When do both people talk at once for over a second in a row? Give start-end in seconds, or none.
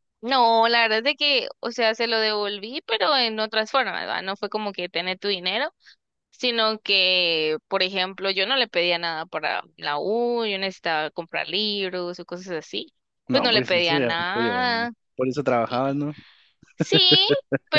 13.3-14.9